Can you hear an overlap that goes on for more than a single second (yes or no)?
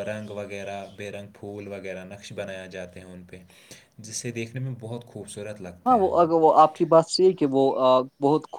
no